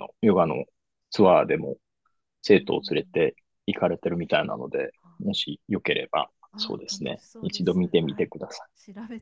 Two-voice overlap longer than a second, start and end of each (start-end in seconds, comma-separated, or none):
6.5-8.3